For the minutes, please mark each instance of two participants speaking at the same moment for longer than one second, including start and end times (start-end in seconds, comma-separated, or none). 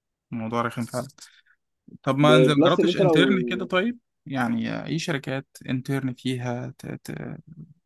2.2-3.7